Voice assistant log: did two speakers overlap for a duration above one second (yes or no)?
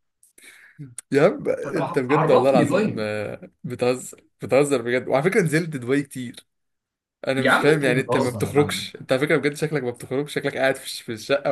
yes